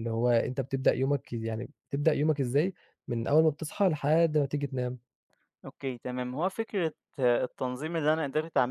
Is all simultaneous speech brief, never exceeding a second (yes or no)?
yes